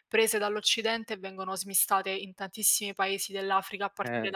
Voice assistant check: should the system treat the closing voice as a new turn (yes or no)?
yes